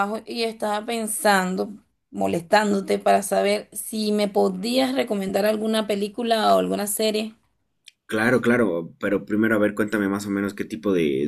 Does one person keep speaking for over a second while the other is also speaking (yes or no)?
no